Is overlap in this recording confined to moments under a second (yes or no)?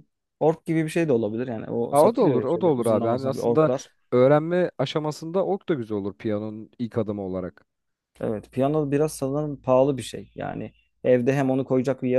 no